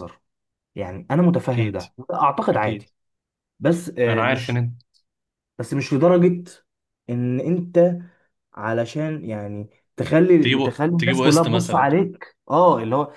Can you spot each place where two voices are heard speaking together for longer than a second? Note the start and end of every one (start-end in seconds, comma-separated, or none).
10.4-11.9